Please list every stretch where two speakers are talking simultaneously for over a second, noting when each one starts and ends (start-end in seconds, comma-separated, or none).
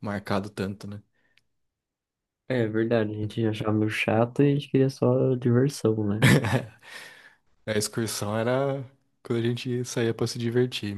none